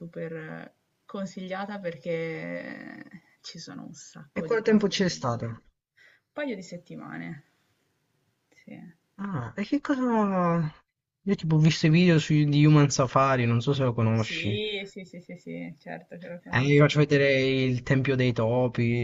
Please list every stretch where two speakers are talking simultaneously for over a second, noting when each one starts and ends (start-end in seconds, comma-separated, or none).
4.3-5.6